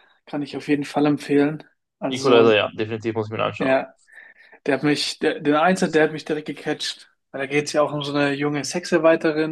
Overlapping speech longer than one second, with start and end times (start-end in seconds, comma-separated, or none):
none